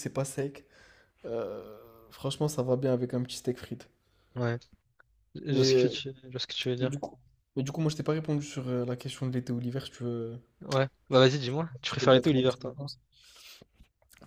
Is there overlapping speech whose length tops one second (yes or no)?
yes